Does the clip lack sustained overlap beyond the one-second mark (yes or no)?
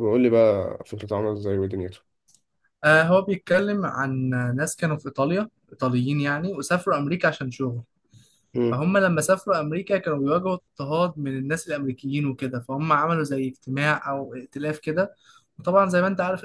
yes